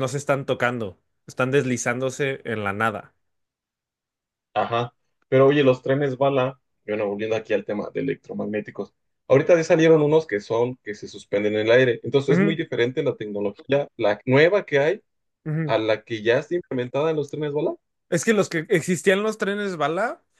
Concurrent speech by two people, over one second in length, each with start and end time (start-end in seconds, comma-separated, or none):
none